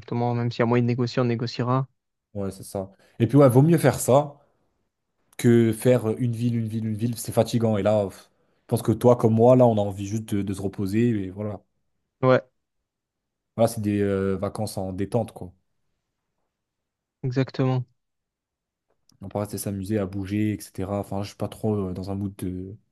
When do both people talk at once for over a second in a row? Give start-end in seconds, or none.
none